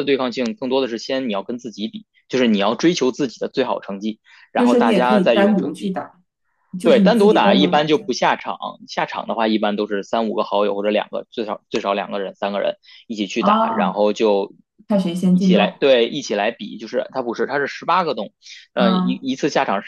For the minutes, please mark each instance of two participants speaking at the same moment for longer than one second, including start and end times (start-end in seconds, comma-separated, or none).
4.5-6.0, 6.8-8.0